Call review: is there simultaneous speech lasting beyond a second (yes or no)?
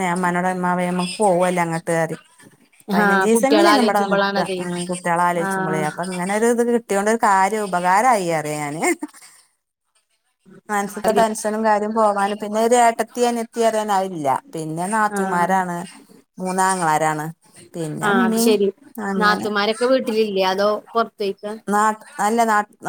yes